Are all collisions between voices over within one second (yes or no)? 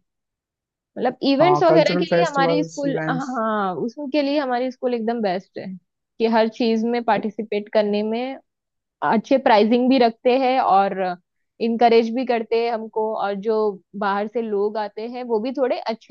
no